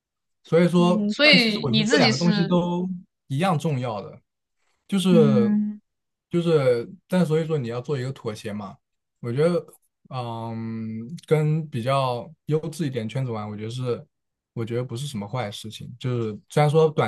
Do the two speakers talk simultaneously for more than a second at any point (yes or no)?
yes